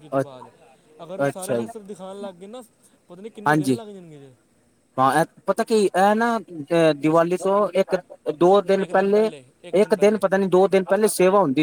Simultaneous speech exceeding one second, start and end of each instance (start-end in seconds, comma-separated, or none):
none